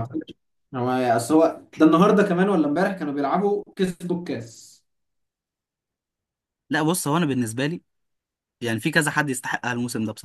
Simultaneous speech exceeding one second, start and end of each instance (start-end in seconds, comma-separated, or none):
none